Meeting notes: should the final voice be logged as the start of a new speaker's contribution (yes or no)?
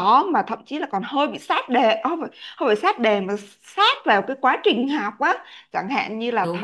no